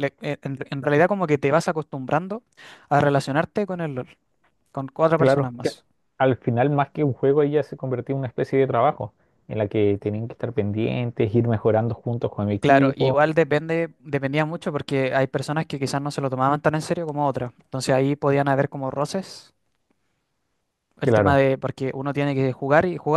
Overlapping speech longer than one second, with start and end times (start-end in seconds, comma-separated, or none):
none